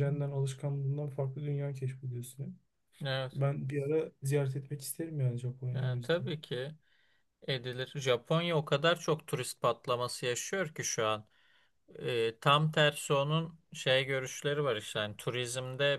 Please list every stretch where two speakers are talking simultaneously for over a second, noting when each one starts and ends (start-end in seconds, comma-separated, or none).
none